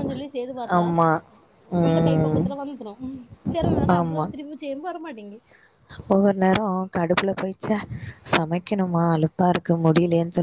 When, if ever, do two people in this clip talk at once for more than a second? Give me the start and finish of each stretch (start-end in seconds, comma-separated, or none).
none